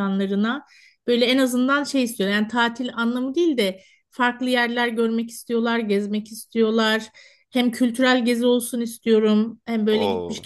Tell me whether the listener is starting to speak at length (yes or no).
no